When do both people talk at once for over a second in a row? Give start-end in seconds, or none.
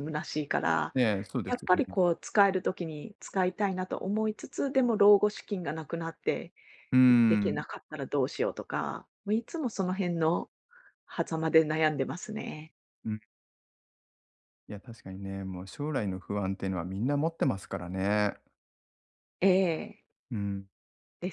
none